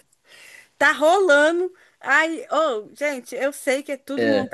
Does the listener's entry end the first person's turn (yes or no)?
no